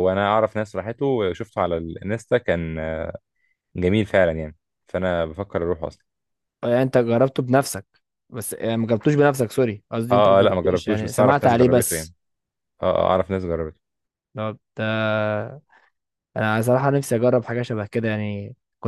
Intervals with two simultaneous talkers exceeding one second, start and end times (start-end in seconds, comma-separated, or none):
10.1-12.1